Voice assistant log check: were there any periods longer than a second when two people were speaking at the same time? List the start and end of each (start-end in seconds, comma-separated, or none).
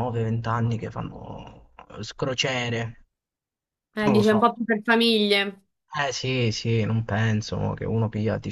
none